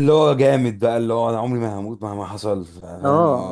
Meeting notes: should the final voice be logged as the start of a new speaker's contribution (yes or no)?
yes